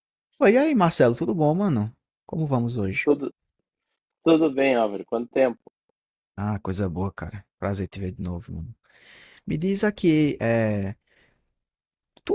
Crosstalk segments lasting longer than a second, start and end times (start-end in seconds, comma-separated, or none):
none